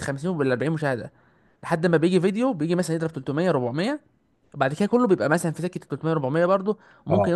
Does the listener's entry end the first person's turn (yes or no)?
yes